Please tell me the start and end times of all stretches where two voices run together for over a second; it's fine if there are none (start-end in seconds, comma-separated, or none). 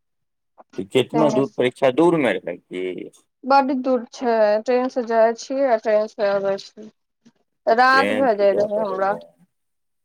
7.8-9.1